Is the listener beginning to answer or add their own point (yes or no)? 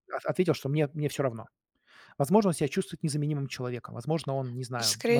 yes